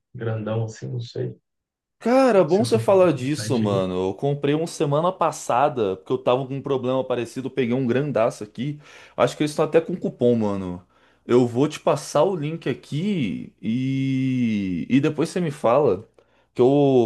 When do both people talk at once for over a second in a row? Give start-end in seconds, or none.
2.5-3.8